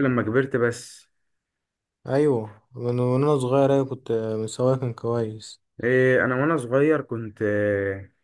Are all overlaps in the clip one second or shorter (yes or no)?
yes